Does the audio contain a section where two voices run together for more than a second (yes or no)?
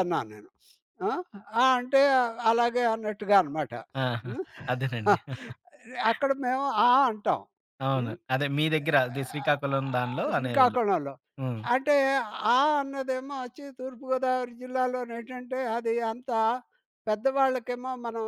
yes